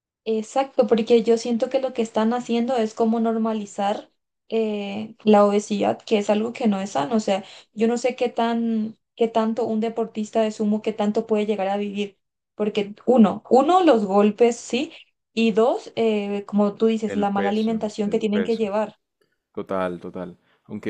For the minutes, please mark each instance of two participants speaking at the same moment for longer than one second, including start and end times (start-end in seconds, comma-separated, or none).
17.1-18.7